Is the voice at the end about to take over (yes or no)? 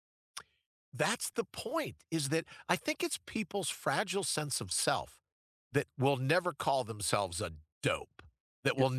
no